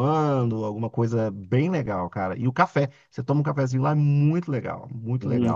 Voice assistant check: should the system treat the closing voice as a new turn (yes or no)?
yes